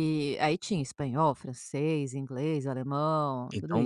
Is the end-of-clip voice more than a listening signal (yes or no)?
yes